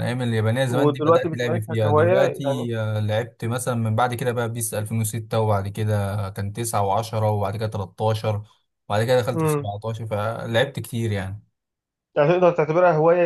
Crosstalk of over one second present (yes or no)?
yes